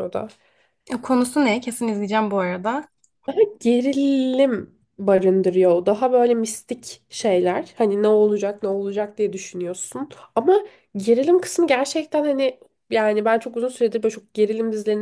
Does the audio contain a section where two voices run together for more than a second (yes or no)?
no